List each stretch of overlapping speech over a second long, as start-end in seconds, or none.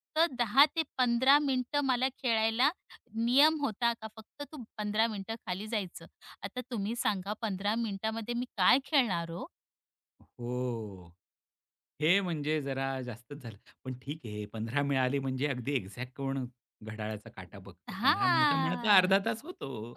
17.9-19.2